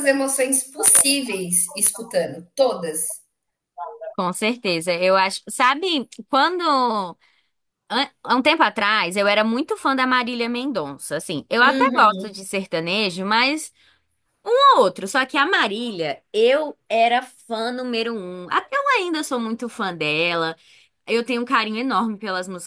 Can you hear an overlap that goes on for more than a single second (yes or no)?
no